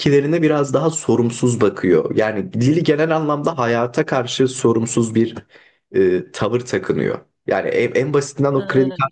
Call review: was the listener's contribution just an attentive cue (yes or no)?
yes